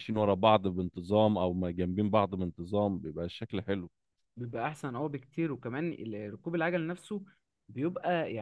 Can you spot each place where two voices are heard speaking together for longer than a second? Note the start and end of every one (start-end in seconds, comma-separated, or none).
none